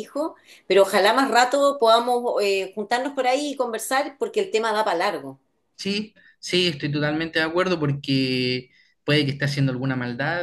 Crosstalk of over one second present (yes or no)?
no